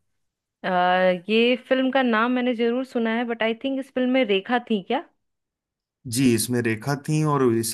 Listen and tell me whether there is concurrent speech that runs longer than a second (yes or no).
no